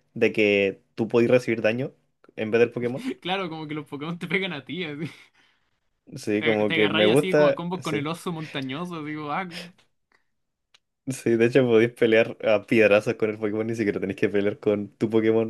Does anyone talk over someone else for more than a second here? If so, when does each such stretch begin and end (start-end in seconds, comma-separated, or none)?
6.4-8.1